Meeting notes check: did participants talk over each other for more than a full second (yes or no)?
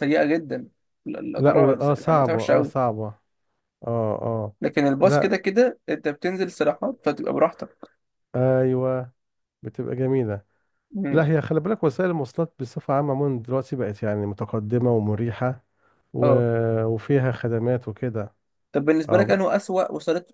yes